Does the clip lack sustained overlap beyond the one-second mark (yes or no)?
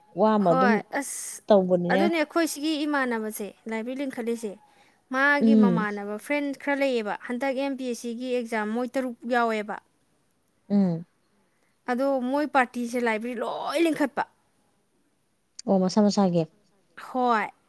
yes